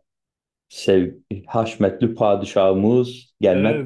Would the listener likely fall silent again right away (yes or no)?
no